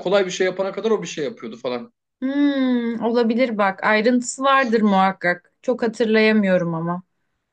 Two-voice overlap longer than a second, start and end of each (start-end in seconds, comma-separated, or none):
none